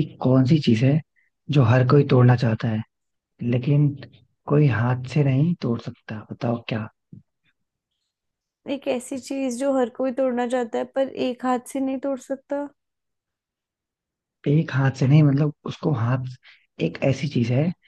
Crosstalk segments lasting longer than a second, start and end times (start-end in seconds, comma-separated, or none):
none